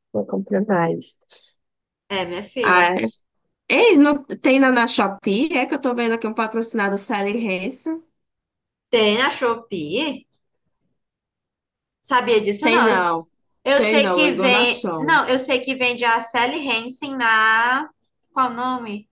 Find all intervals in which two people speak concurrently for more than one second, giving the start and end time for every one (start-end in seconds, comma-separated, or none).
13.8-15.2